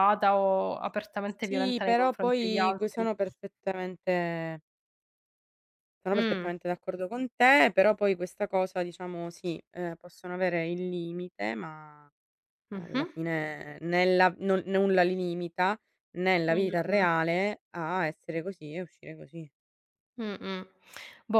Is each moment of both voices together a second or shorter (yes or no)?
no